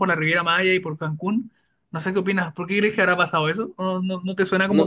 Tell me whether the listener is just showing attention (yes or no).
no